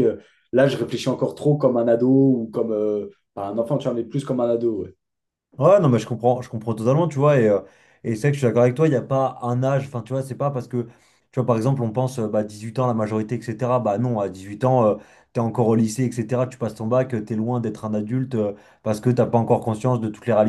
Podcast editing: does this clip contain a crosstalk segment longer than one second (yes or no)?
no